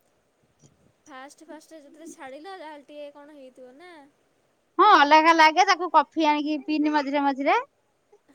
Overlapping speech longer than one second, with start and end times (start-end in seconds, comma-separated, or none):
none